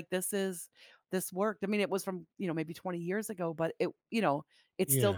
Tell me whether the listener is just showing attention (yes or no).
yes